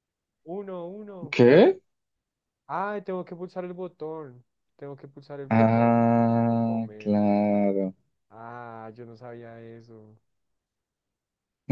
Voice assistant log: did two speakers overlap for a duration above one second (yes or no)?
yes